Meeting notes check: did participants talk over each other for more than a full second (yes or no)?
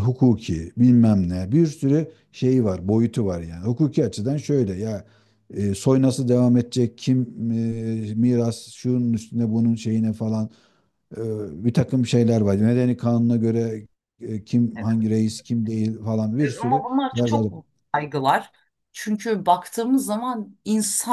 no